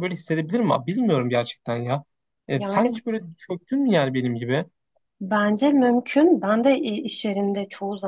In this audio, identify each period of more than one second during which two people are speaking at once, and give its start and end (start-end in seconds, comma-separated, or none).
none